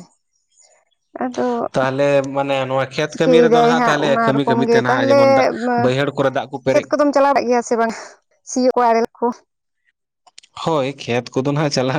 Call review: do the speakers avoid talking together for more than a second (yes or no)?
no